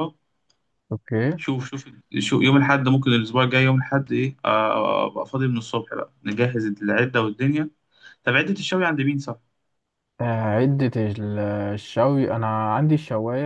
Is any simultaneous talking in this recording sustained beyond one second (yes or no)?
no